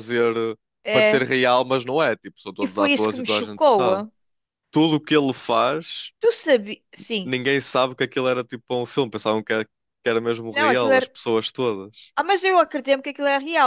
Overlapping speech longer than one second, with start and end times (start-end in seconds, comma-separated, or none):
2.6-4.0